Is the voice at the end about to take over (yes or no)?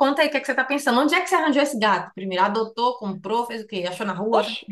yes